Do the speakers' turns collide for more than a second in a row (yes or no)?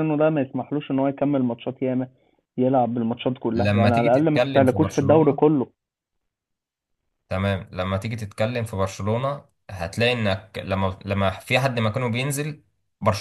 yes